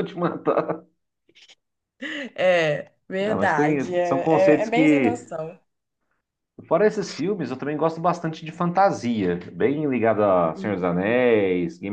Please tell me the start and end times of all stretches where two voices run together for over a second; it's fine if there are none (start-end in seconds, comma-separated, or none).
3.2-5.2